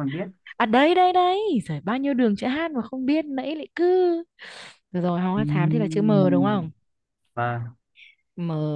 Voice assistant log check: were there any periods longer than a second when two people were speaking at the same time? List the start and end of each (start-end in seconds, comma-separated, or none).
5.4-6.6